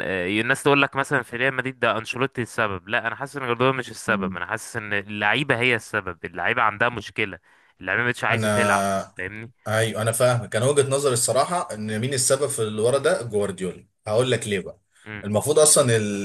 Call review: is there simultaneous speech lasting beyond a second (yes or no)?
no